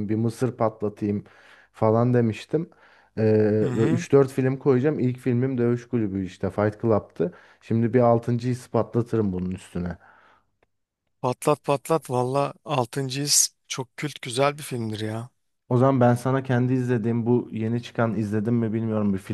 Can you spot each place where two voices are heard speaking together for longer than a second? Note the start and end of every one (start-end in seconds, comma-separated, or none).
none